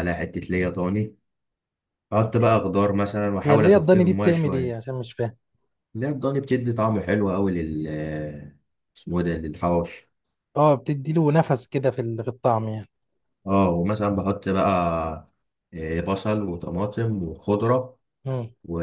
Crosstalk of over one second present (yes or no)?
yes